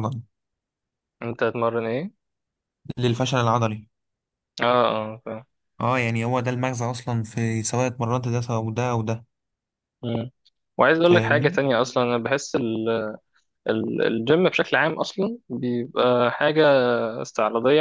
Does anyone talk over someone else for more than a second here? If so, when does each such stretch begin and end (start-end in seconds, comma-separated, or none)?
none